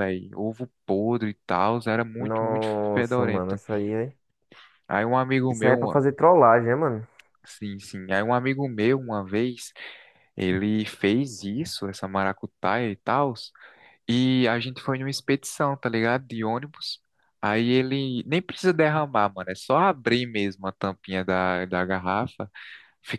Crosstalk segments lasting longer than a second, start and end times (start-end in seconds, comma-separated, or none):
2.2-3.6